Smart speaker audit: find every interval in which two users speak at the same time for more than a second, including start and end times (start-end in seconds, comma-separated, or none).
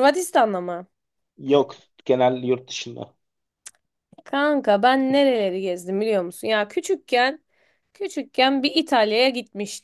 none